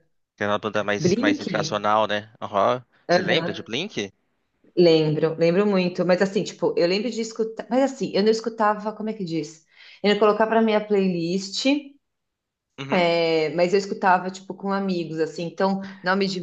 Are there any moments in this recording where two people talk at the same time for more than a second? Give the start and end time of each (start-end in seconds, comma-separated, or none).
none